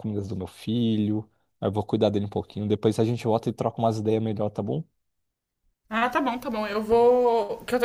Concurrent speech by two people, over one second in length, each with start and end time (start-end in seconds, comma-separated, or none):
none